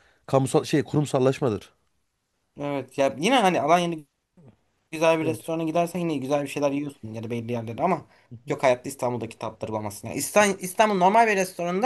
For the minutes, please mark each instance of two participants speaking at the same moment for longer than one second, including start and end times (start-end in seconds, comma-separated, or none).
none